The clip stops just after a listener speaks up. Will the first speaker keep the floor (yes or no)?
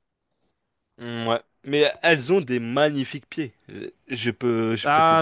no